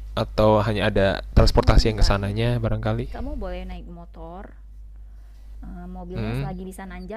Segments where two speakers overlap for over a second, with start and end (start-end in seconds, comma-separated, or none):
none